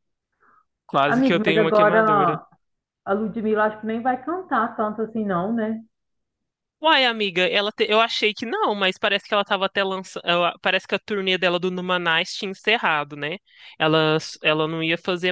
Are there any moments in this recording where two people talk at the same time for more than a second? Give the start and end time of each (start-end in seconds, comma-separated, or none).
1.1-2.4